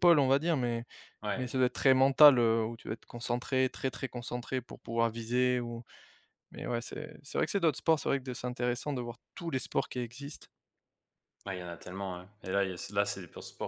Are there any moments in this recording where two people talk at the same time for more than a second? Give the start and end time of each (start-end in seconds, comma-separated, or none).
none